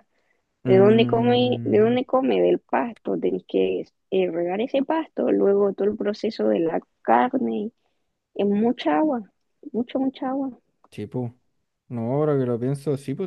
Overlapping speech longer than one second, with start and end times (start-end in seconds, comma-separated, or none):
0.7-2.0